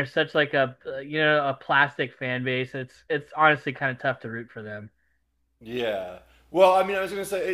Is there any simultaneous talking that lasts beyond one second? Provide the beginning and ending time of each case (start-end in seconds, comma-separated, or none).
none